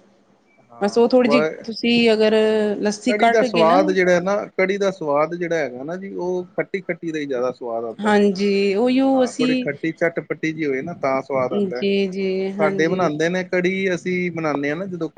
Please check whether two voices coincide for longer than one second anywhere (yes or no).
no